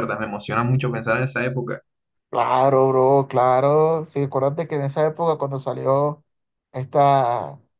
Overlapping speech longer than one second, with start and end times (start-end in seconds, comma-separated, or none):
none